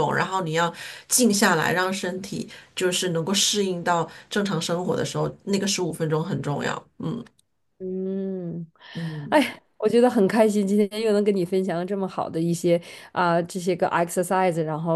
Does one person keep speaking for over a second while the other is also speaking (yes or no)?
no